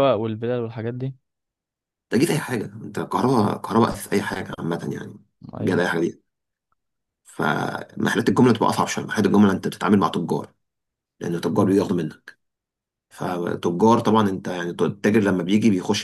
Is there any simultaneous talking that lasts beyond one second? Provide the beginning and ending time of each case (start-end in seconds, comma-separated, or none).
none